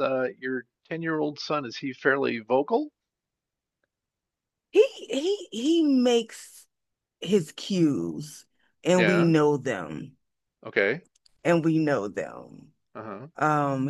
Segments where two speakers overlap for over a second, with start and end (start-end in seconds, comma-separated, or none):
none